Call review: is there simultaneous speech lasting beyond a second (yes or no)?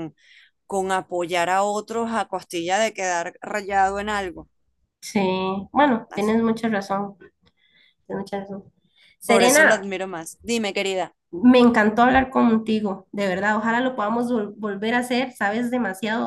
no